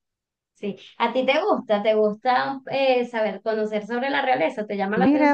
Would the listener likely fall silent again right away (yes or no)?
no